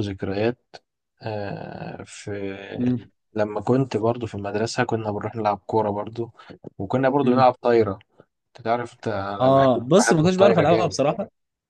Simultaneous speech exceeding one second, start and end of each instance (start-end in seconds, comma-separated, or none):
9.4-11.0